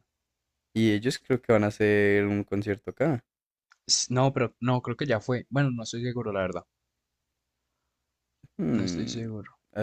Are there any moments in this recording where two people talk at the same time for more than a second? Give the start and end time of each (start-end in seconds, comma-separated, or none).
none